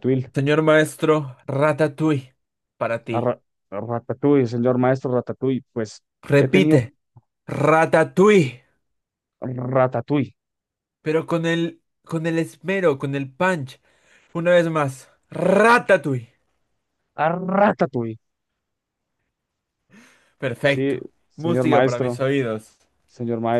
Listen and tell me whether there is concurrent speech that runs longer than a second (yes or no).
yes